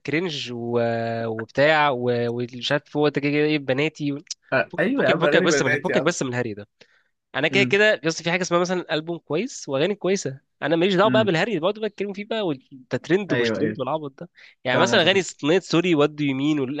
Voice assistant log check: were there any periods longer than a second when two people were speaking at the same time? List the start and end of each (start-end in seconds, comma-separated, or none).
4.7-6.2